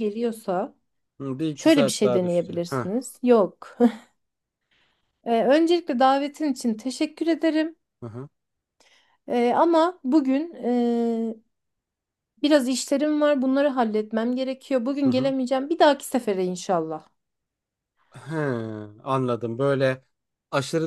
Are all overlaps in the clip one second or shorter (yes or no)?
no